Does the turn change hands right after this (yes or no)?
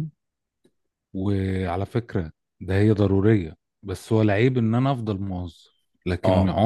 no